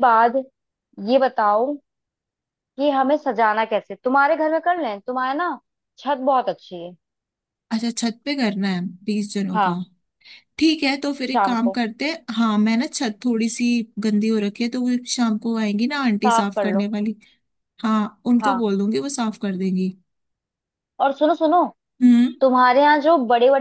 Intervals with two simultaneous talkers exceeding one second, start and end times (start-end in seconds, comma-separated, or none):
none